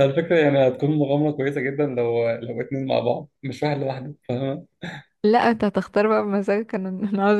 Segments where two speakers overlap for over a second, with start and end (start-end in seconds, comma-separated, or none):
none